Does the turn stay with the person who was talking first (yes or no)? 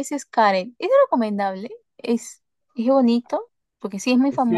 no